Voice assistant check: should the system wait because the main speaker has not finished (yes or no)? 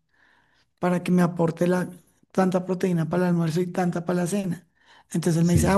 yes